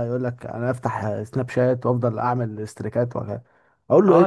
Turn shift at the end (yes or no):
yes